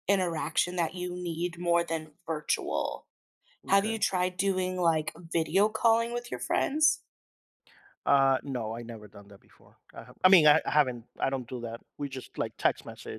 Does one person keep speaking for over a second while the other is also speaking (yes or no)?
no